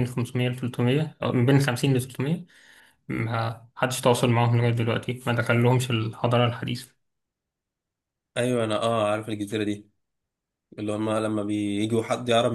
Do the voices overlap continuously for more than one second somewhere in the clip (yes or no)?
no